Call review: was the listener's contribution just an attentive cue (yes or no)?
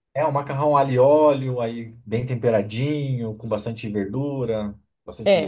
no